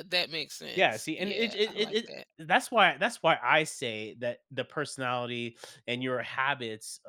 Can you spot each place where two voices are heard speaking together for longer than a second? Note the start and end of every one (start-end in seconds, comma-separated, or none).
0.7-2.3